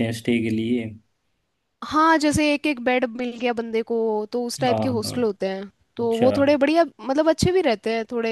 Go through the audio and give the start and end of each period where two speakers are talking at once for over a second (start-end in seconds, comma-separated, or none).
none